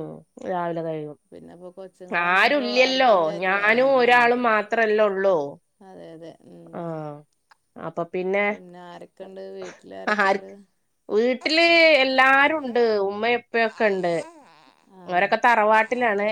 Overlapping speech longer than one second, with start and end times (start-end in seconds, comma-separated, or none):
2.4-4.6